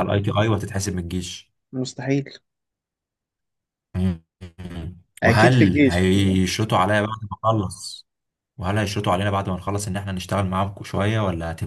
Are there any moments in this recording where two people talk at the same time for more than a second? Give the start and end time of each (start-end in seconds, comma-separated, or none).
5.2-6.4